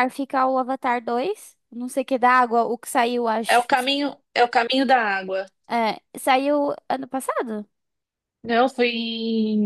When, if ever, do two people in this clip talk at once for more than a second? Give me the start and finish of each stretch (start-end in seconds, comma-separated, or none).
none